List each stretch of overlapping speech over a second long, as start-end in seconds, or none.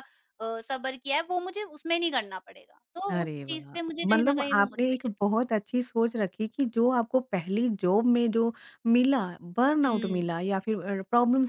3.1-5.1